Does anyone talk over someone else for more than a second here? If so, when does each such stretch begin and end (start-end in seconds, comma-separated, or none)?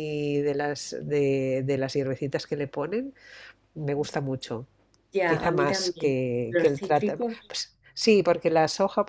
5.2-7.5